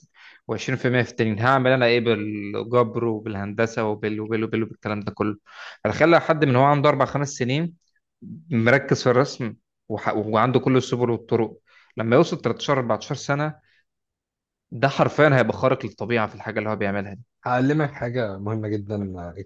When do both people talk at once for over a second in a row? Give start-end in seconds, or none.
none